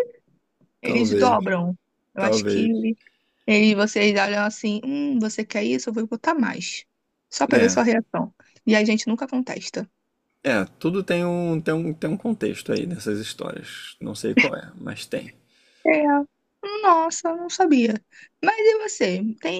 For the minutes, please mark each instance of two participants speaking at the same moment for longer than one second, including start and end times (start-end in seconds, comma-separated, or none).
none